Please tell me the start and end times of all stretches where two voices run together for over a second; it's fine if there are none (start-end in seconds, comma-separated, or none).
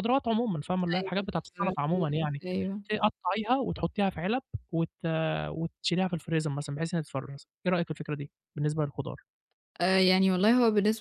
0.9-2.4